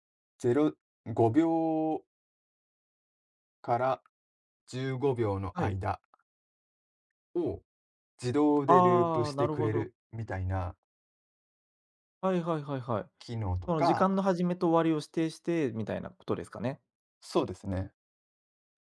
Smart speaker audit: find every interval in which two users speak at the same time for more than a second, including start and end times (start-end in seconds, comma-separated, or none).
8.7-9.9